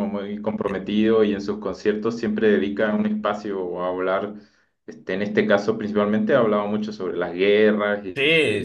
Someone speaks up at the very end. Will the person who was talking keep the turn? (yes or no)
no